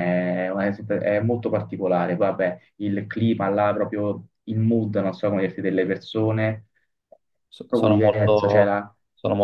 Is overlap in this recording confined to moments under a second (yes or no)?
no